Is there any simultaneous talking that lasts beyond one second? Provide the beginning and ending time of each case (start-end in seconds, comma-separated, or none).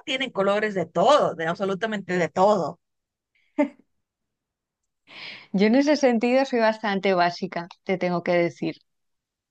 none